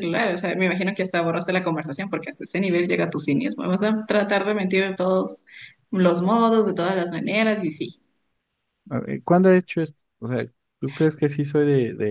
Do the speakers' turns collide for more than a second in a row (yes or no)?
no